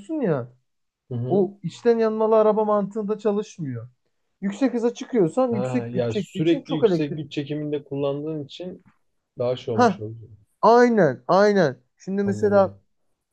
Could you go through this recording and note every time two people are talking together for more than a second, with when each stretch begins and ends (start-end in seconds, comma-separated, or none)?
5.5-7.3